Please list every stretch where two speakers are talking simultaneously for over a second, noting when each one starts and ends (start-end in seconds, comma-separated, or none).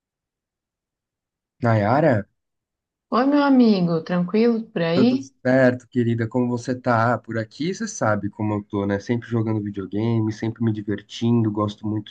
none